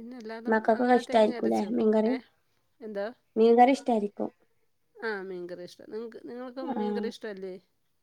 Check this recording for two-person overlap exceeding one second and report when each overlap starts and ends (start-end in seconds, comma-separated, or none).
0.5-2.1